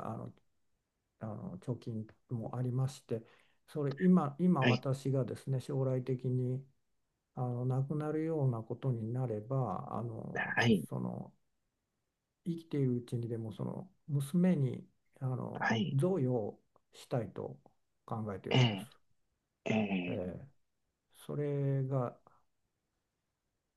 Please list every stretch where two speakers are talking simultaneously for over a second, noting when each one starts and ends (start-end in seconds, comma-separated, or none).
none